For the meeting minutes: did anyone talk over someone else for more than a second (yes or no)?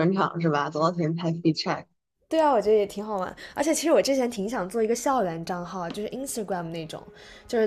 no